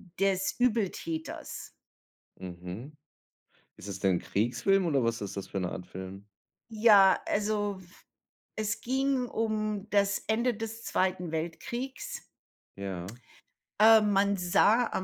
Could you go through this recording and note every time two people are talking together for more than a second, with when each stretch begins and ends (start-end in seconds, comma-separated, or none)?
none